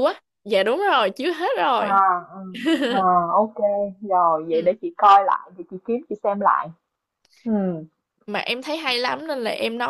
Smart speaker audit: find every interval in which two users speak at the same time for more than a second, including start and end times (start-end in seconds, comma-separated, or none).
none